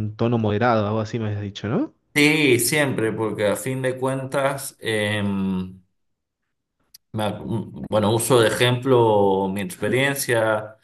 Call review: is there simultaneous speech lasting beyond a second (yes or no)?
no